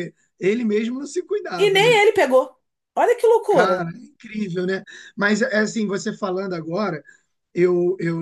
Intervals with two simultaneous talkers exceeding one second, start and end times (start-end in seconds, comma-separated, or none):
none